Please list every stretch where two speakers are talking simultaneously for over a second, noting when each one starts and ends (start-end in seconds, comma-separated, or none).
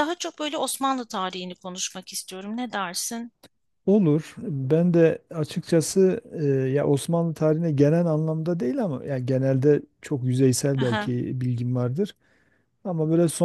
none